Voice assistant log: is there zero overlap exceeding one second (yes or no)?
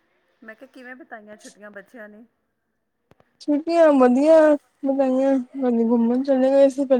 yes